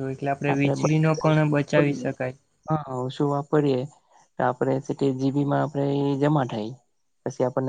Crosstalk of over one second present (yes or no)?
yes